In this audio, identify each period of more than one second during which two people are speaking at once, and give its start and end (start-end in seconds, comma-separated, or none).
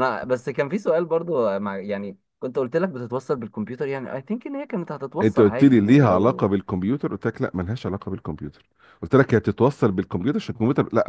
5.2-6.5